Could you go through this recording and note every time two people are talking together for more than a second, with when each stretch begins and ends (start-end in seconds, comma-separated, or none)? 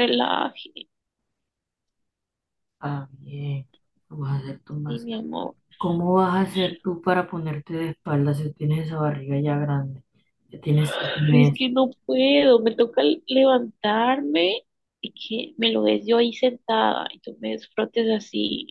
none